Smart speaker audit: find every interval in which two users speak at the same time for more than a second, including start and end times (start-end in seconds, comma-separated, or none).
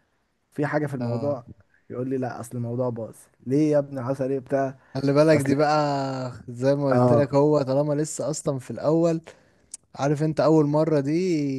none